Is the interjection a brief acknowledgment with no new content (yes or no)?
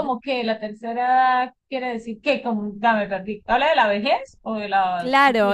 no